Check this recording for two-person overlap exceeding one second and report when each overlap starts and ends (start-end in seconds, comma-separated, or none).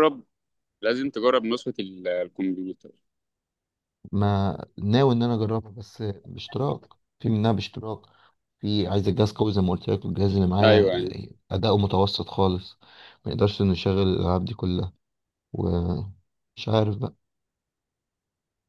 none